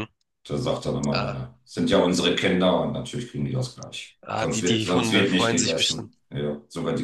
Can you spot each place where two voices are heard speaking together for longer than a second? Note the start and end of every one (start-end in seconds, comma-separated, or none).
4.2-6.1